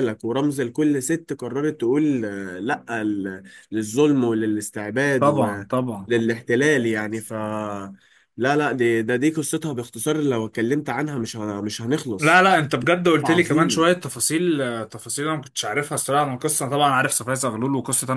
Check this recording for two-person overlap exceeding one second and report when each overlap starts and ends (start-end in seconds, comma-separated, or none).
none